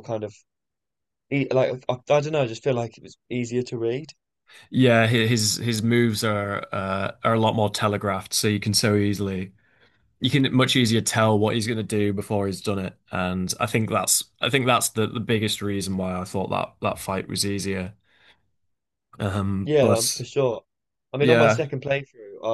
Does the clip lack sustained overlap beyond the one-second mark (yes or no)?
yes